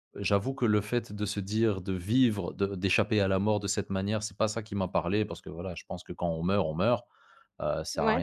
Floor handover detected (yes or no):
no